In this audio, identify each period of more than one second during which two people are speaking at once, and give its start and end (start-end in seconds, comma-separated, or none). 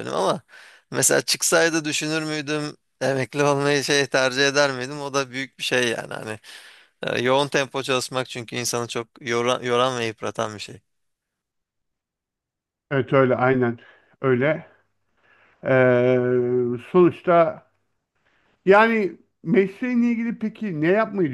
none